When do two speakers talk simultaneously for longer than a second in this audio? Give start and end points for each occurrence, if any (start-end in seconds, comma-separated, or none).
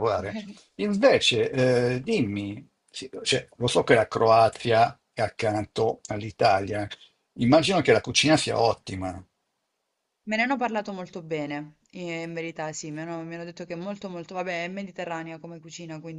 none